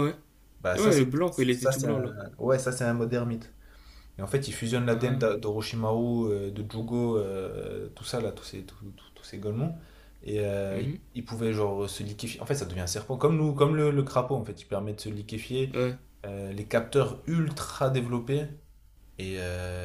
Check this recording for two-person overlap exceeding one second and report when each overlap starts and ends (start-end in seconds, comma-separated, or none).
0.8-2.1